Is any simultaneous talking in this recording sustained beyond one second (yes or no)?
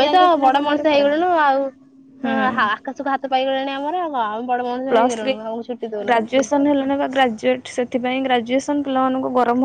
no